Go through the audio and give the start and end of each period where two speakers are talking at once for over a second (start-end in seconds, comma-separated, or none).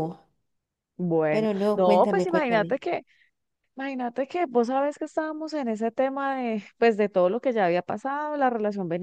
1.3-2.8